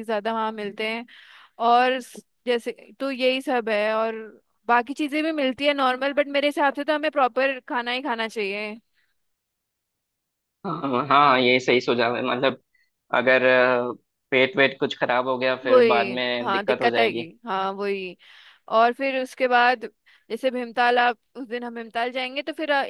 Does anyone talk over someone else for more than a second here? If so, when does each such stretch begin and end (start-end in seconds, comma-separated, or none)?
15.7-17.3